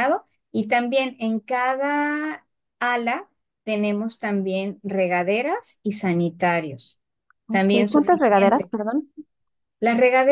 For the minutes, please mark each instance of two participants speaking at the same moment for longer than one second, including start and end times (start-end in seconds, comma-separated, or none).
7.5-8.7